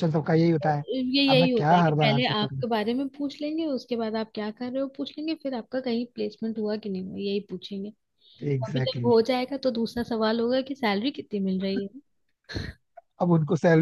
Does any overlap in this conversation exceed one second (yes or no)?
yes